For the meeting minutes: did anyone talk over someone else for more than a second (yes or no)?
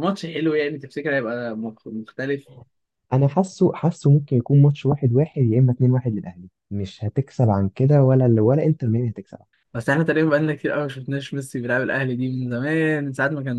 no